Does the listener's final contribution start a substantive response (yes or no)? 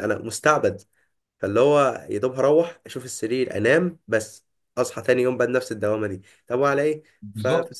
no